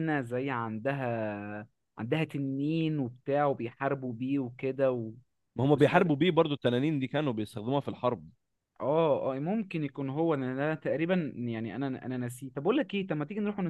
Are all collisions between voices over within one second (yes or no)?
yes